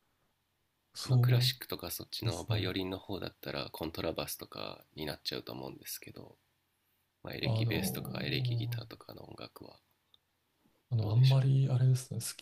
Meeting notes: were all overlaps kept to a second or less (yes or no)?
no